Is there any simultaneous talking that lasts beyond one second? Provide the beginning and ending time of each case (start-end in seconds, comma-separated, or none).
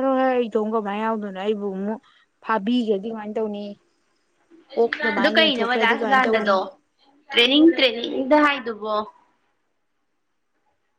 5.2-6.5